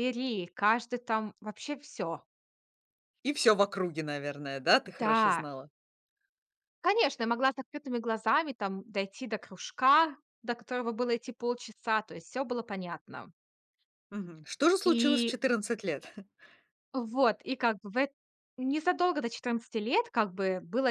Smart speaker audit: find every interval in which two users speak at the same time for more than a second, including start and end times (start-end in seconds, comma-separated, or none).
none